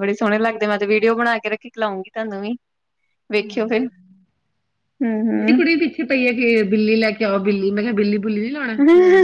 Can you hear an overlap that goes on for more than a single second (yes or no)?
no